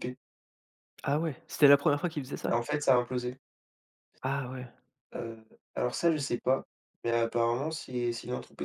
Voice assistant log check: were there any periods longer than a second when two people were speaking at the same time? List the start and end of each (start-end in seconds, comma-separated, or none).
none